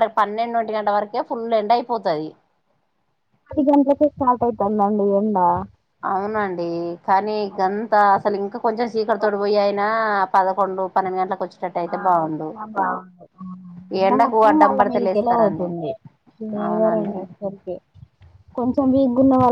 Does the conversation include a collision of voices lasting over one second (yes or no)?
yes